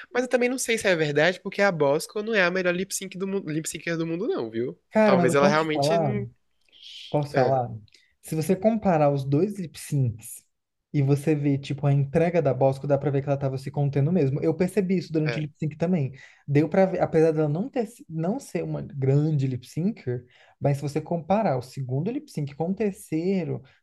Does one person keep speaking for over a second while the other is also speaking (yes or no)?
yes